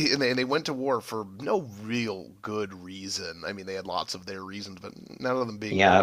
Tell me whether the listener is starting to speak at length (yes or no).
yes